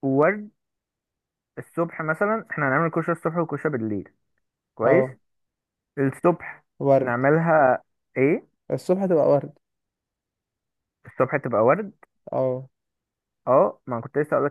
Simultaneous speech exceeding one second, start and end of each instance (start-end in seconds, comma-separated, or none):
none